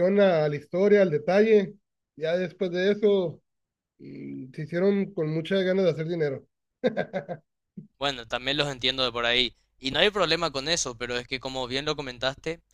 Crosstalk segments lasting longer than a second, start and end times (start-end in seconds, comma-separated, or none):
none